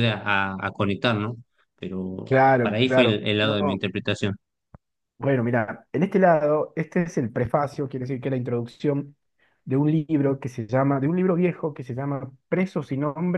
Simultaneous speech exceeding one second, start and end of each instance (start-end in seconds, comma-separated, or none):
2.6-3.8